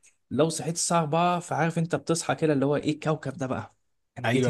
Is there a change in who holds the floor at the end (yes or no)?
yes